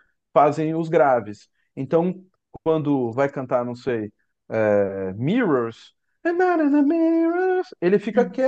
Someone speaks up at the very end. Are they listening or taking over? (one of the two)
listening